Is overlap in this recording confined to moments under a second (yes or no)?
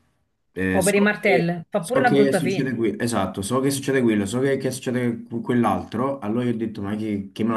no